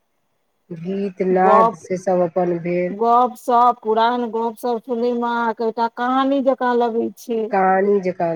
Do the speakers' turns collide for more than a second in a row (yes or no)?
no